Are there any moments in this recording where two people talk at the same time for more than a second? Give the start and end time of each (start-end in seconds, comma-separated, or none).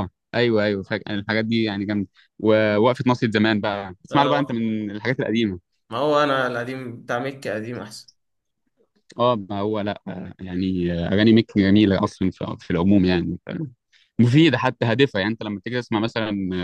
none